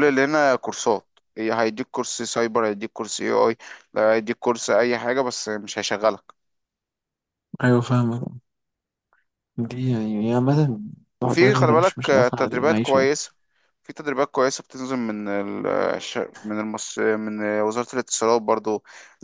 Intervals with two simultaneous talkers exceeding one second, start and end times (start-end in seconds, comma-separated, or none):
11.2-13.1